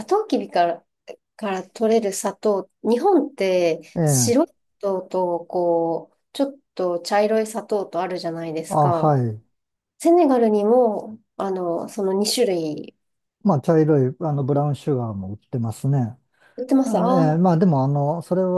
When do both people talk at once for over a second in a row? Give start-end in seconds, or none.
none